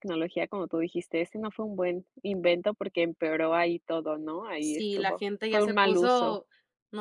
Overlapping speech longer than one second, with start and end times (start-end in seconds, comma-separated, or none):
4.6-6.4